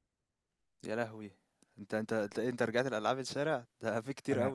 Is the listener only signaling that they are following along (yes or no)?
yes